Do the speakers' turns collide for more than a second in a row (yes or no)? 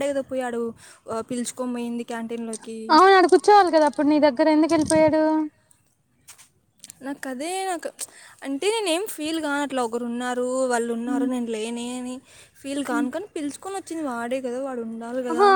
no